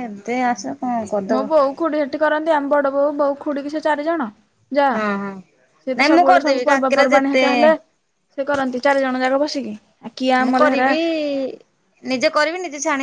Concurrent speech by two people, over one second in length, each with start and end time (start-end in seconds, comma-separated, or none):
6.0-7.4